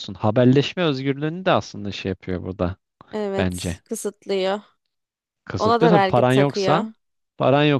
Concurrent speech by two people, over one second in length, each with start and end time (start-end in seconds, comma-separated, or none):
5.6-6.8